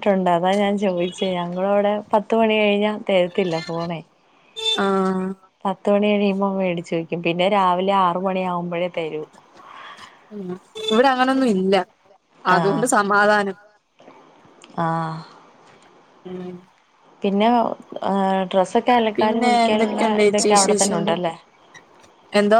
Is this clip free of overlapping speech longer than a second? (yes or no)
no